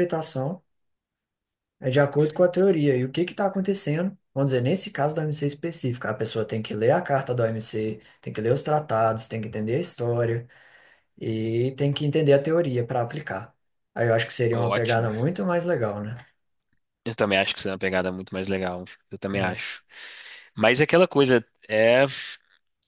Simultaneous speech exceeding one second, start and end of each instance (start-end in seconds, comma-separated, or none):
none